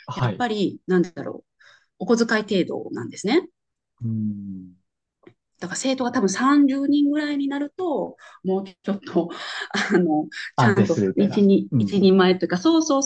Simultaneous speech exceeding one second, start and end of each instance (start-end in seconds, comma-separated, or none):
10.6-12.1